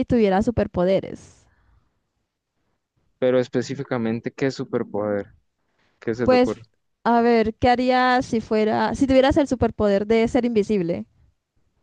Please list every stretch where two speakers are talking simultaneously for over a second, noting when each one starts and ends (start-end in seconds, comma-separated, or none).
none